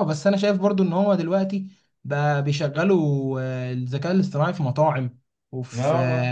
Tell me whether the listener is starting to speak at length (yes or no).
no